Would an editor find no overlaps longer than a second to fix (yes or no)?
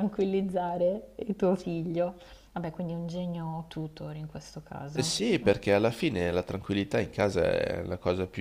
yes